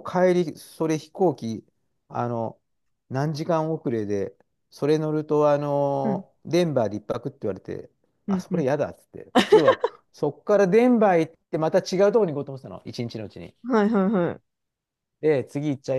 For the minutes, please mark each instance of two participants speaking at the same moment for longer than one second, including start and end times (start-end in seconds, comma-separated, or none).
none